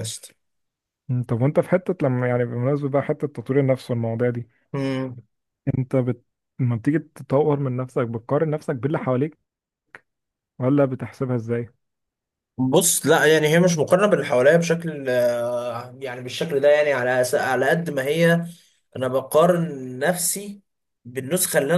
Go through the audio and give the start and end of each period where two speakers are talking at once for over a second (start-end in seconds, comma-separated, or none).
none